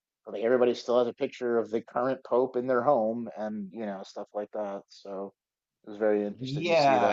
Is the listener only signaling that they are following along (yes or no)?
no